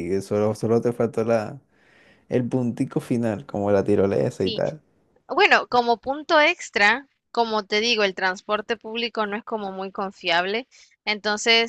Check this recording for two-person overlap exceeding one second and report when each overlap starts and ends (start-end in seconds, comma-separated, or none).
none